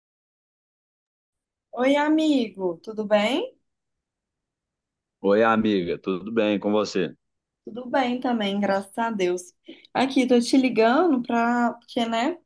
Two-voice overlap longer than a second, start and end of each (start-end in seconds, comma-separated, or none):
none